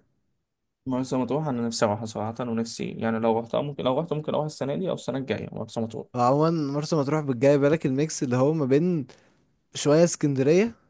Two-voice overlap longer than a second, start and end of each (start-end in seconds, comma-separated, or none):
none